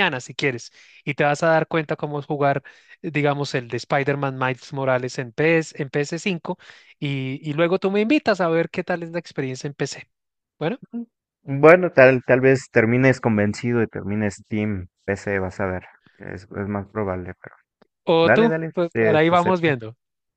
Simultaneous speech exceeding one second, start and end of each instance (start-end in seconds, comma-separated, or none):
18.2-19.7